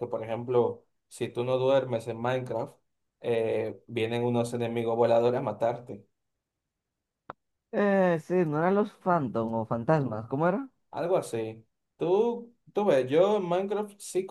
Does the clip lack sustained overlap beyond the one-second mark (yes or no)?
yes